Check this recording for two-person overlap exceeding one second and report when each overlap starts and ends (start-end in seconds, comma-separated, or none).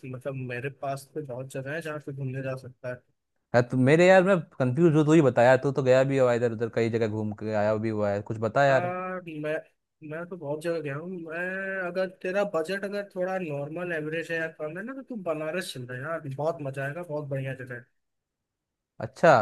none